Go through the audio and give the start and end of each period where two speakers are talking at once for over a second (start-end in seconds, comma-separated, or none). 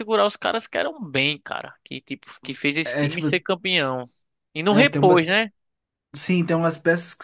none